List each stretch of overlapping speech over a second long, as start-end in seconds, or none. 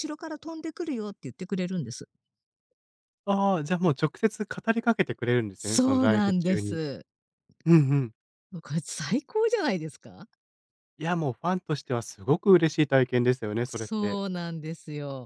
5.6-6.8